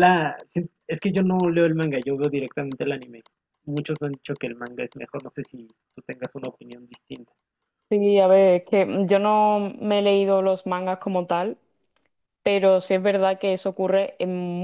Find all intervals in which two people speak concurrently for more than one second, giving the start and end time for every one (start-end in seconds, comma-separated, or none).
none